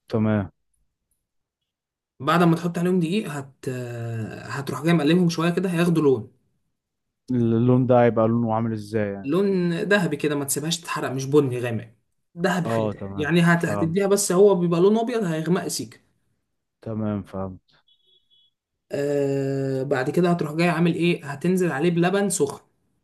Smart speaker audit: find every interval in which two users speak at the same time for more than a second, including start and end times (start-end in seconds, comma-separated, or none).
12.7-14.0